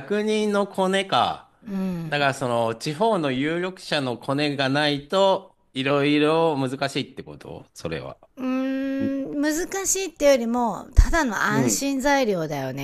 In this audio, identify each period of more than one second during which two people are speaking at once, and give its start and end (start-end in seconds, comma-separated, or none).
none